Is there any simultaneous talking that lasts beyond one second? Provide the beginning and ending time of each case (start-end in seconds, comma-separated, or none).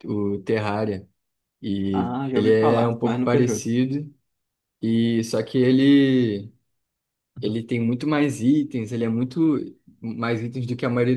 1.9-3.7